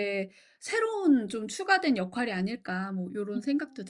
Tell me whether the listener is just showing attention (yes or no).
no